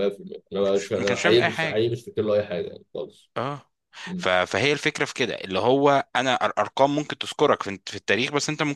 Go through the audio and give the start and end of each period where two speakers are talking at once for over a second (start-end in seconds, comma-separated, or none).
0.6-1.9